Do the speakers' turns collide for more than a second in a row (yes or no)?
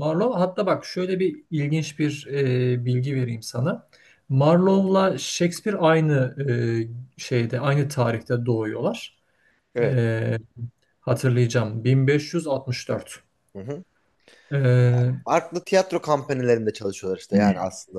no